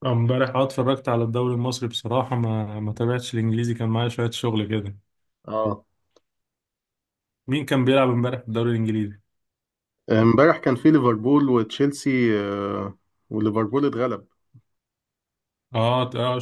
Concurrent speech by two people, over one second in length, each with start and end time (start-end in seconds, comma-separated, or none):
none